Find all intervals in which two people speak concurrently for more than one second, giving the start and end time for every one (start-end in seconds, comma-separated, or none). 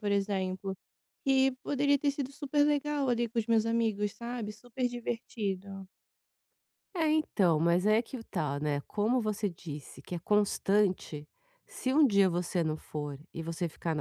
none